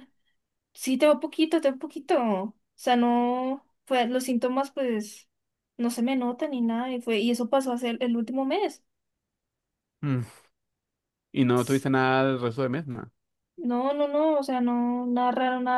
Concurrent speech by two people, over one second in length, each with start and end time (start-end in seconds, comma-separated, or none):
none